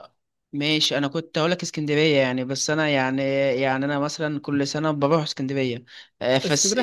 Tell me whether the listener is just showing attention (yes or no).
yes